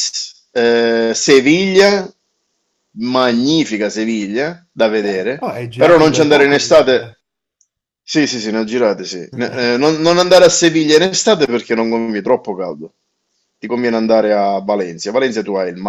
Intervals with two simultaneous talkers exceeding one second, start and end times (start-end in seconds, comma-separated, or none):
5.0-7.1